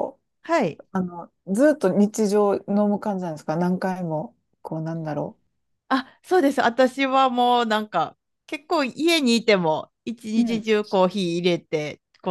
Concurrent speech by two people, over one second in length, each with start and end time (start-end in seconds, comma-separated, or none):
none